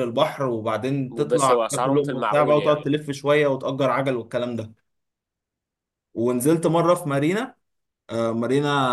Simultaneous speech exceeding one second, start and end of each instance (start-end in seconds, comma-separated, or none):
1.3-2.9